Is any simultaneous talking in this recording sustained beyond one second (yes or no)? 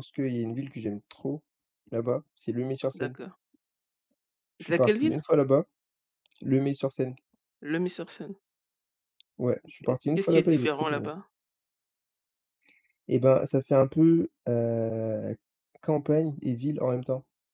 yes